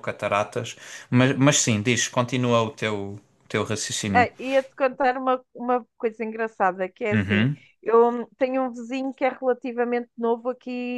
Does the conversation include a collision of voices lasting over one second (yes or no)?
no